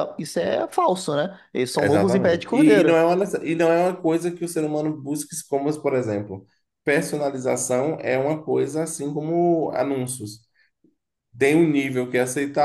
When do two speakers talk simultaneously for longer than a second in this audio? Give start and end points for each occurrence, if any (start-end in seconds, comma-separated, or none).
1.8-3.0